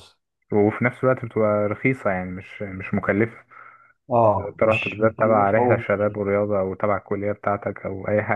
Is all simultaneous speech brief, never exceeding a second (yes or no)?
no